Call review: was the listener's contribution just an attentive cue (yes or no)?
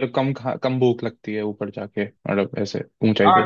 no